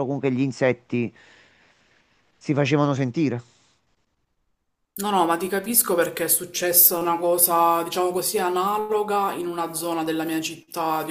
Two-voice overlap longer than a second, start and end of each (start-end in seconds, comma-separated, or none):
none